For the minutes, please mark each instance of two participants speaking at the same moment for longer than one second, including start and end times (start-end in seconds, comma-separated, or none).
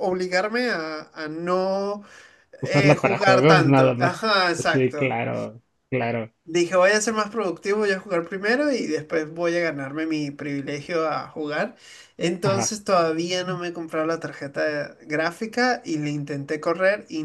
2.6-5.2